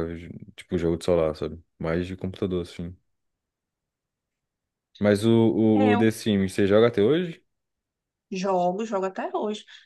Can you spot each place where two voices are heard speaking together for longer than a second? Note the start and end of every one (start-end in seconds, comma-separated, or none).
none